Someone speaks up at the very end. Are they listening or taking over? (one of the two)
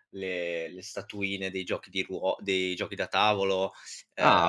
taking over